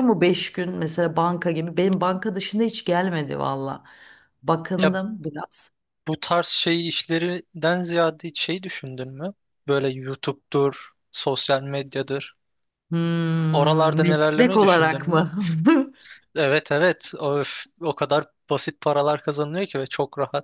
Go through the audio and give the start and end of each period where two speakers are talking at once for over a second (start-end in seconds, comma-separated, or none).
13.5-15.2